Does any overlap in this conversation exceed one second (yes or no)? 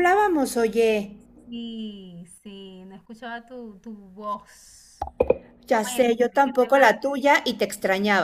yes